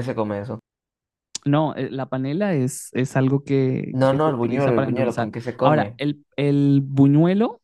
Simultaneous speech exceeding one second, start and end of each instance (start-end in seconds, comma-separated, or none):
4.0-6.0